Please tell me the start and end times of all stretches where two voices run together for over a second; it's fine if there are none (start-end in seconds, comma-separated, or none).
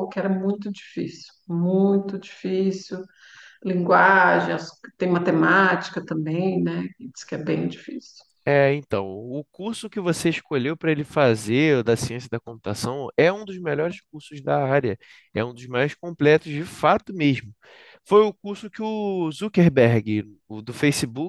none